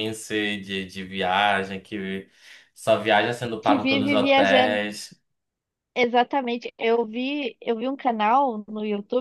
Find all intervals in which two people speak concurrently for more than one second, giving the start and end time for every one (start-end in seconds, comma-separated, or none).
3.6-4.8